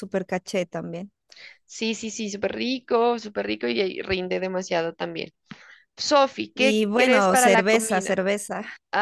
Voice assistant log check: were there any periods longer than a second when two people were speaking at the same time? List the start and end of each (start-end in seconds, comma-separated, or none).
6.5-8.2